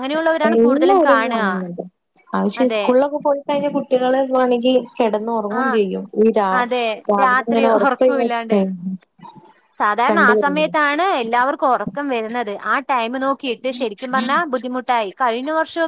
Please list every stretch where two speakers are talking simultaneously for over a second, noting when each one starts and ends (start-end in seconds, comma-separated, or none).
7.2-8.6